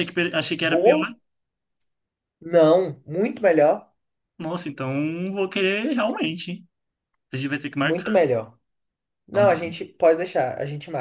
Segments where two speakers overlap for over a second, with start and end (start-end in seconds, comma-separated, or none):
none